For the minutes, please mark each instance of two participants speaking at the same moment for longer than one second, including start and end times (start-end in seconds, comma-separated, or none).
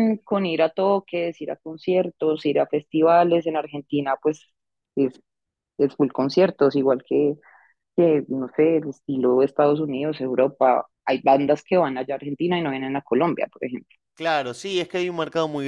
none